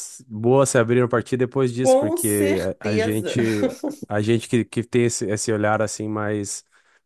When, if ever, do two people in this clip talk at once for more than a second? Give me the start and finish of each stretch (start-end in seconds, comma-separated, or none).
1.8-3.4